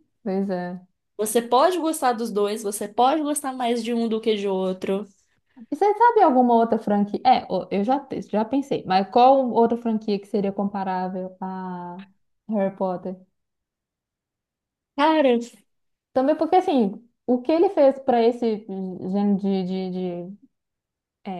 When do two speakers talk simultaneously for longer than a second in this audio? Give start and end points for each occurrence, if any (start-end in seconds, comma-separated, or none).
none